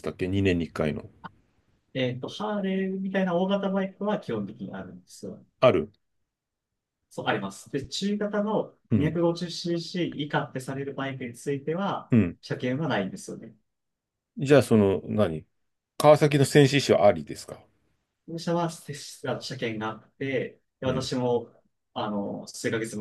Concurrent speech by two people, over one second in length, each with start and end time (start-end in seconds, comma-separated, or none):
none